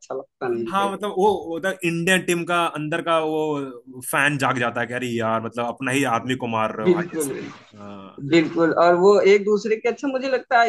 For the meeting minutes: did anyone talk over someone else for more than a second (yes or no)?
no